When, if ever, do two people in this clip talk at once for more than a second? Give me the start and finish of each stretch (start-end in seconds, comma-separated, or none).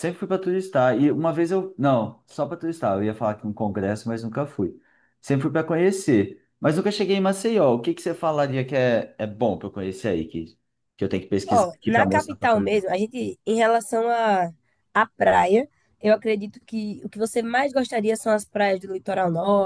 11.5-12.9